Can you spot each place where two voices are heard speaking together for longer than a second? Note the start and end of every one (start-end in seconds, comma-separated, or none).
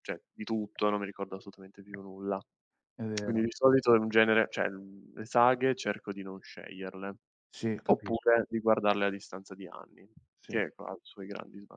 none